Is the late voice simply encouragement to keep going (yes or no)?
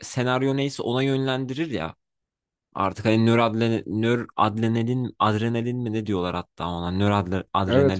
yes